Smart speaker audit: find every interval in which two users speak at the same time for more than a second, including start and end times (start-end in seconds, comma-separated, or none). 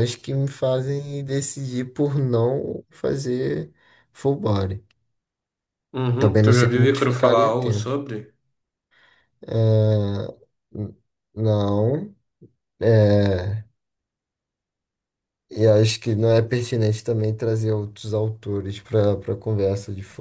6.2-7.9